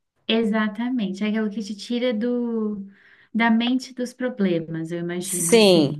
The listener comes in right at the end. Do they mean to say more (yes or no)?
yes